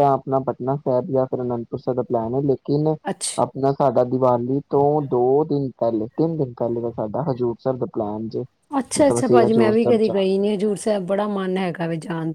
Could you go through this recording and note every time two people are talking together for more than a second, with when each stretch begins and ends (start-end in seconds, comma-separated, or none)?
9.0-10.4